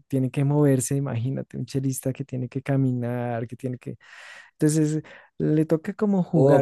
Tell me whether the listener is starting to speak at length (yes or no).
yes